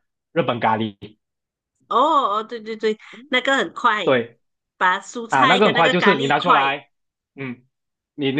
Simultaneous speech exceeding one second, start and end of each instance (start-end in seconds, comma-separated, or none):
5.3-6.7